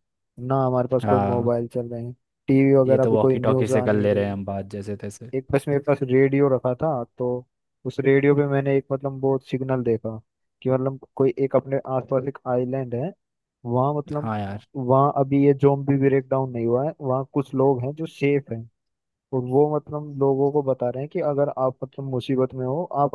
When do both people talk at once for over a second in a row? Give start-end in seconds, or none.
2.9-4.4